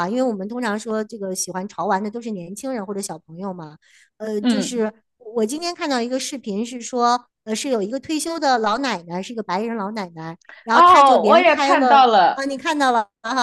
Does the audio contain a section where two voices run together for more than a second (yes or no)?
yes